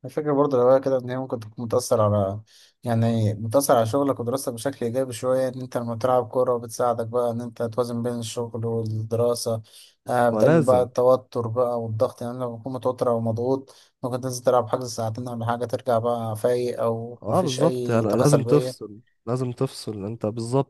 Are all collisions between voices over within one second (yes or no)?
no